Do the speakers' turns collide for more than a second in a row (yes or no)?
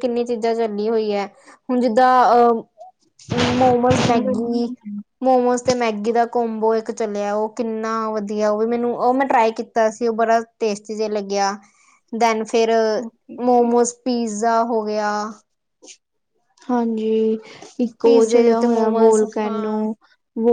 yes